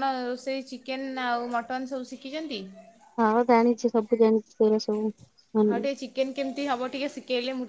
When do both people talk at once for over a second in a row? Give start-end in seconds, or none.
none